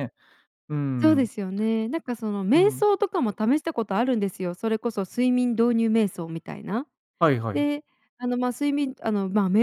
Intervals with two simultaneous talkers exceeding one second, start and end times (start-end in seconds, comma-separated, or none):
none